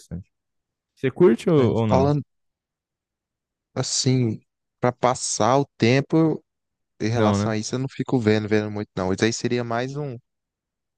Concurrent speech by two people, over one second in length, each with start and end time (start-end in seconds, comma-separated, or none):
none